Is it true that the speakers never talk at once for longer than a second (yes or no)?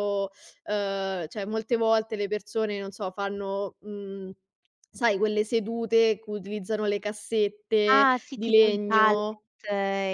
no